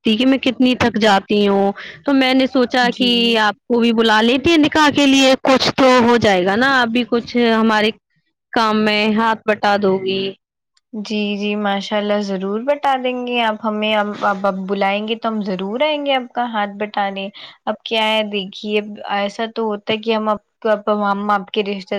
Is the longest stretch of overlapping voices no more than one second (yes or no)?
yes